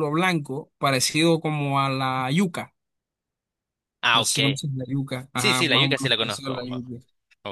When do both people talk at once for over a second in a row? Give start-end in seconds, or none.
5.3-6.5